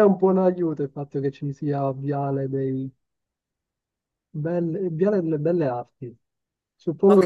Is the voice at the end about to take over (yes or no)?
yes